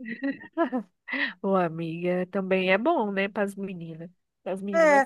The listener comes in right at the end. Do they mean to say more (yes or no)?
yes